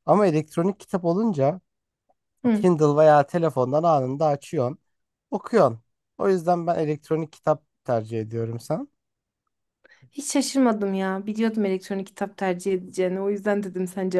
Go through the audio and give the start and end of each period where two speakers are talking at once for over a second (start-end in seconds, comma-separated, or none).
none